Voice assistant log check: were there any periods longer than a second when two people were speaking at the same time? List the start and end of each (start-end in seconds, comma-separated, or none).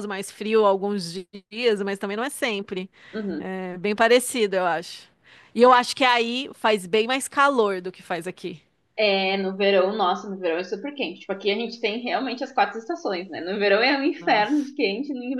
none